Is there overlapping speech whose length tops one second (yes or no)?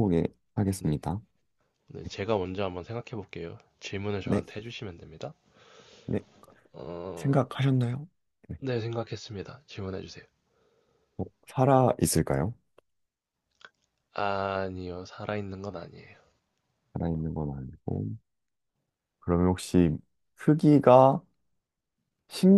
no